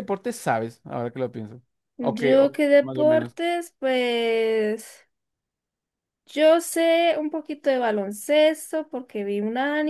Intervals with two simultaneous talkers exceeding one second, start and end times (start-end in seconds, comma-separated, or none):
2.0-3.4